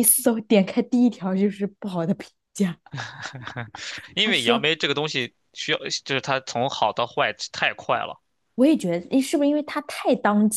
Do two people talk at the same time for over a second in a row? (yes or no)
no